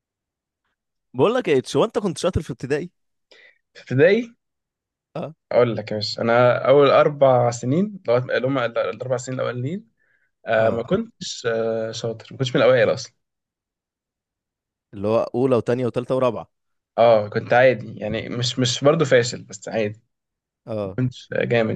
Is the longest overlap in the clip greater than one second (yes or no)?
no